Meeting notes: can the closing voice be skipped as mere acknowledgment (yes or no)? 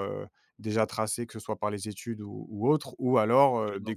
yes